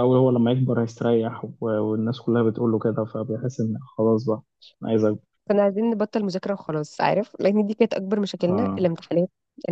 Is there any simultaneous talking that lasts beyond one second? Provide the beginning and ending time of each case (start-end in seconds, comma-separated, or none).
none